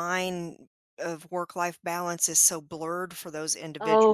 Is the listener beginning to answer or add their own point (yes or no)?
yes